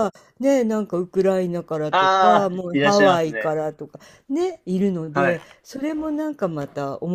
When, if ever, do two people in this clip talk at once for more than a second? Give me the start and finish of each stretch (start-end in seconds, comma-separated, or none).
1.9-3.6